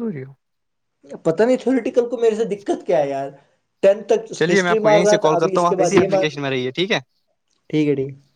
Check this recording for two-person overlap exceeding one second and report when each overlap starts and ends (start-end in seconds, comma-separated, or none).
4.4-6.2